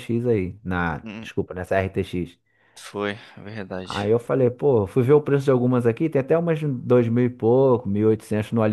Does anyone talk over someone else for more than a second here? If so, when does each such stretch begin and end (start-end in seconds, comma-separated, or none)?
none